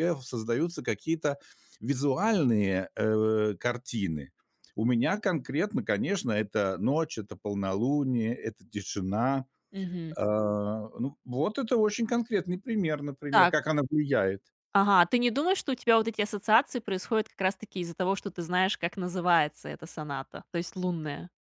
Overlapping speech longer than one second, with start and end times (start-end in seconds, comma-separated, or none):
none